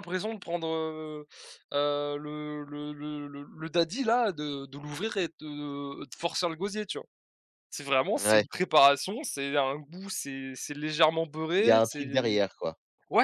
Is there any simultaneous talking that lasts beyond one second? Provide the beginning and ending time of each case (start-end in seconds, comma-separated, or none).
none